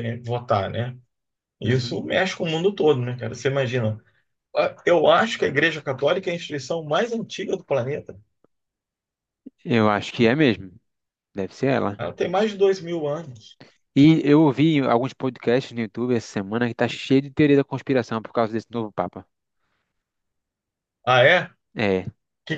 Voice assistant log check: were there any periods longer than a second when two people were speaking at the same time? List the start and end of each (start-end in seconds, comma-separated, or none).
none